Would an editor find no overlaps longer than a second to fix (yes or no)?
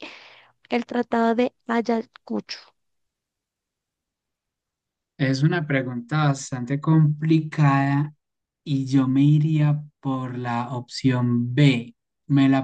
yes